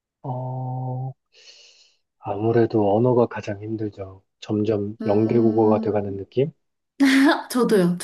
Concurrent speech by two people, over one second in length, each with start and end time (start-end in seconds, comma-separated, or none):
5.0-6.2